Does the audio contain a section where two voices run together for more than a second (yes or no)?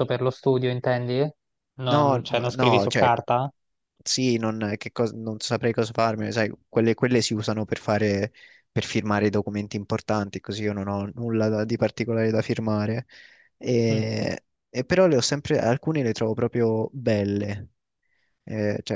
yes